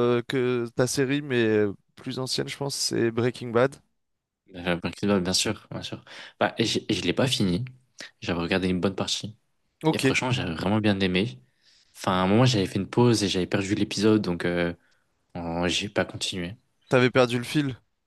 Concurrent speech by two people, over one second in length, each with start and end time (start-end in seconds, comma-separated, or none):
none